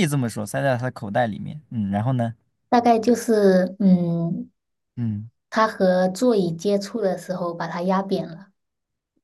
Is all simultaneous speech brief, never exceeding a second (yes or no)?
yes